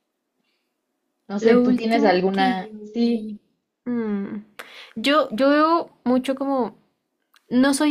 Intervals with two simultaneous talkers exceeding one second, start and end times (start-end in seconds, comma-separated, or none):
1.4-3.3